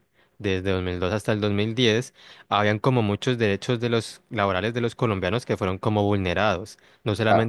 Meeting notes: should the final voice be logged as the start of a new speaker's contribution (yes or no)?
no